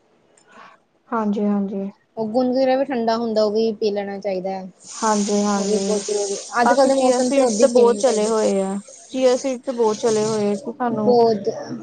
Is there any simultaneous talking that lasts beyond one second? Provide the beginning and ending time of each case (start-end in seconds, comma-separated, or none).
6.6-8.3